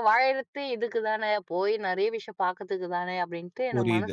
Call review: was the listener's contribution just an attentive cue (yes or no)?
no